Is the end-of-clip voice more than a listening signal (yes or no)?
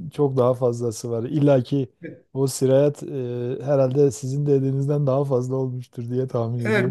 yes